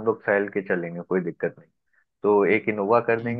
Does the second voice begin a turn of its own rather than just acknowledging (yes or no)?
no